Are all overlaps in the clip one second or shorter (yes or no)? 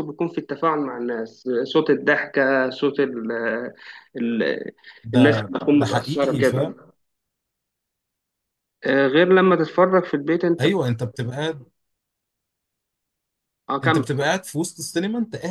no